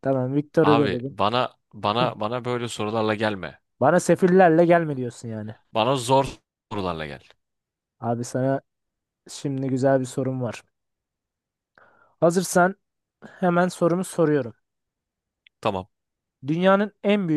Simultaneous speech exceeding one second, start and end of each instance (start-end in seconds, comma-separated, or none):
none